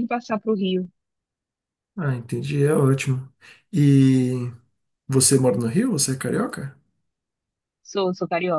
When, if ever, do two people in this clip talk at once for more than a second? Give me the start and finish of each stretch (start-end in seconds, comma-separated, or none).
none